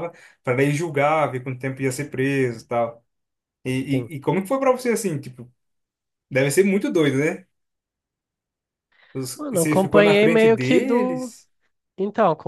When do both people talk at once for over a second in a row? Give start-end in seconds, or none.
9.4-11.3